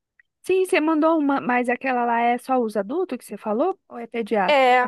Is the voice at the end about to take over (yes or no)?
yes